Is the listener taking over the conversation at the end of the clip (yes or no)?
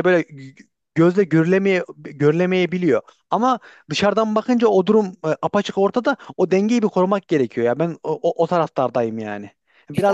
no